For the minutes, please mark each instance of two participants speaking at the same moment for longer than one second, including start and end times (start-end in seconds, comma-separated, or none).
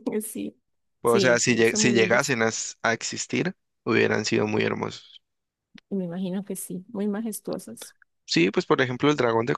1.0-2.3